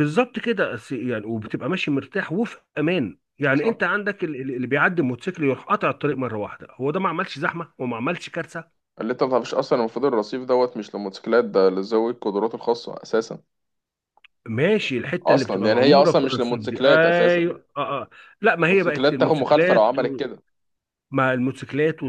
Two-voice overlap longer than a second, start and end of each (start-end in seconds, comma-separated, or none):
15.2-17.5, 18.6-19.8